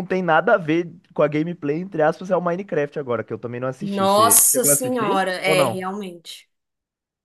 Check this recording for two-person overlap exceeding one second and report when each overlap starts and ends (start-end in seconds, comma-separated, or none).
3.8-5.8